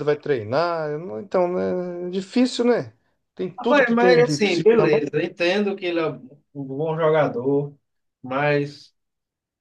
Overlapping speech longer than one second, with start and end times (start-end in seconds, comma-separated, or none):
3.6-5.1